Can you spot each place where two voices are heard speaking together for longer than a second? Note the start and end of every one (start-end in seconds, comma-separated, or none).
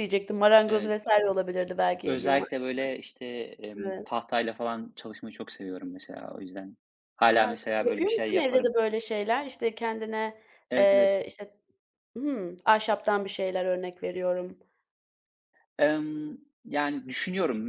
7.4-8.8